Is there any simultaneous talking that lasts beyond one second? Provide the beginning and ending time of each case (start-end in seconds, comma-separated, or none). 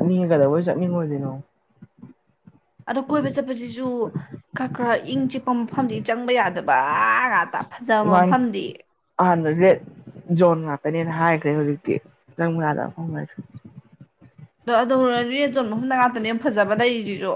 none